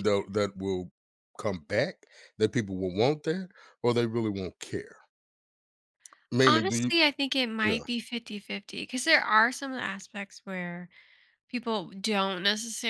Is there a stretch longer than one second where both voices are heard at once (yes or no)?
no